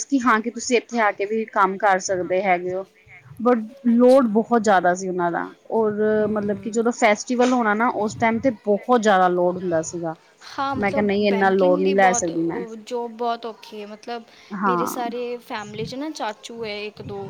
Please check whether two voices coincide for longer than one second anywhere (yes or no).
yes